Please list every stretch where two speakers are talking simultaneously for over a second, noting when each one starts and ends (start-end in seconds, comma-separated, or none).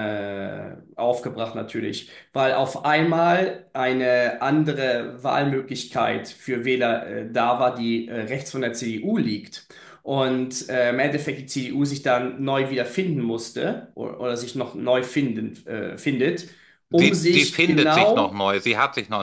16.9-18.4